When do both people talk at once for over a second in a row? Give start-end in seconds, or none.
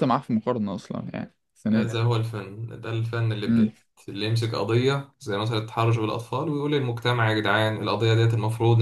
none